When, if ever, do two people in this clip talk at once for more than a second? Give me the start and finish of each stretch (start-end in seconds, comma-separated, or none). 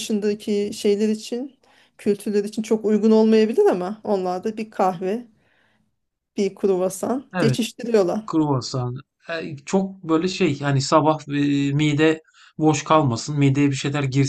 none